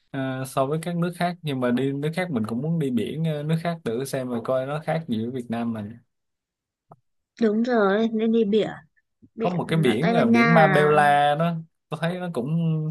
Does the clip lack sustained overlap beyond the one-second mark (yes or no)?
no